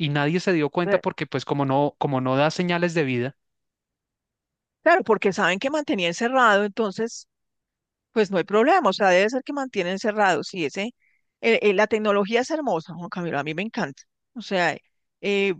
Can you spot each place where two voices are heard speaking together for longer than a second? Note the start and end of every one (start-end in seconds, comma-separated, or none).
none